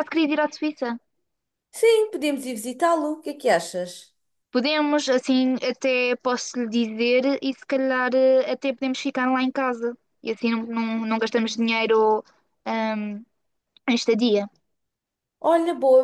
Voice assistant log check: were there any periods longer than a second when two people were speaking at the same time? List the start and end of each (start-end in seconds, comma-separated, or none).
none